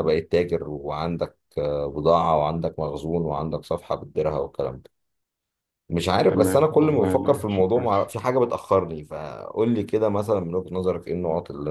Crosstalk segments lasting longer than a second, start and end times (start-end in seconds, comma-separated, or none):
6.3-8.0